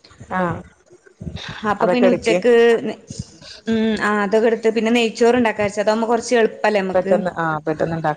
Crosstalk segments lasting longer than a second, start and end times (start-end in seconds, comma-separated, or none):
none